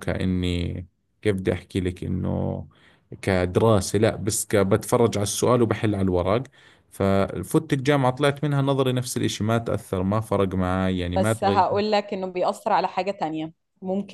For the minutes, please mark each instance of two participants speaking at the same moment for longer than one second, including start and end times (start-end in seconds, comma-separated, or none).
none